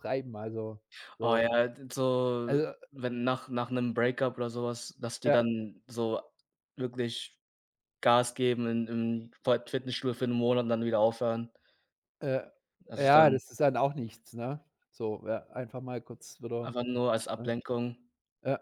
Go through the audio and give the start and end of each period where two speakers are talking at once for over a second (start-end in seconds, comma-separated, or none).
none